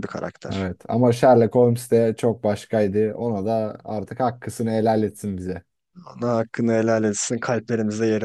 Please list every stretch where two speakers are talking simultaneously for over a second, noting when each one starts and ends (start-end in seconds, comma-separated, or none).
none